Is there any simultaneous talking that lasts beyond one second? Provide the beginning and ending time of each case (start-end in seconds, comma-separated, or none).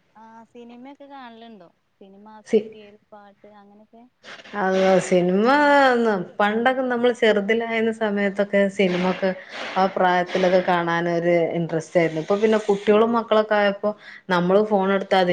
none